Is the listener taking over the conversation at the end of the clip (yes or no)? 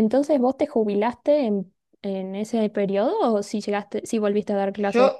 yes